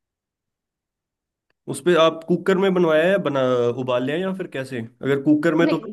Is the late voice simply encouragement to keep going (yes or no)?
no